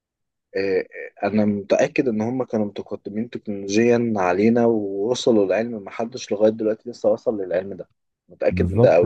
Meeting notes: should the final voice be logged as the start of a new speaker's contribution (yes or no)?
yes